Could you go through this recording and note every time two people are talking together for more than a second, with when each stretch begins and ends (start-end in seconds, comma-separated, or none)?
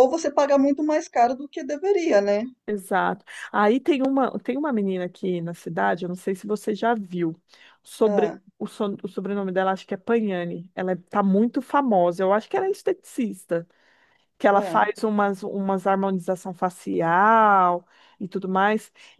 none